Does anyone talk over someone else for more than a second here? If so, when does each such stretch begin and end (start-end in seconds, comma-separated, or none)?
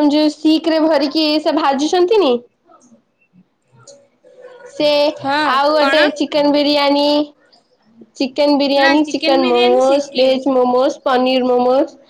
8.8-10.4